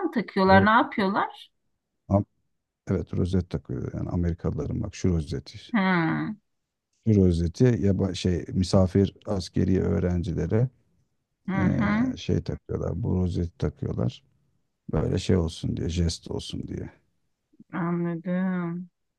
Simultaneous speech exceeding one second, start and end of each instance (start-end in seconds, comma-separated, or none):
none